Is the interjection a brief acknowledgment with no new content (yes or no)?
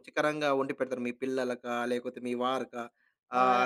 yes